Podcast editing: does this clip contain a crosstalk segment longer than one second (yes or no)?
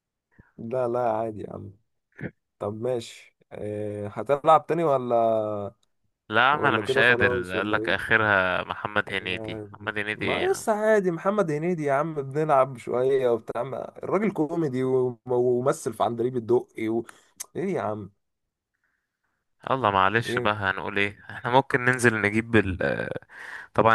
yes